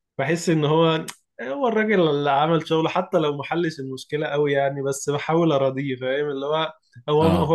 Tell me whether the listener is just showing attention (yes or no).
yes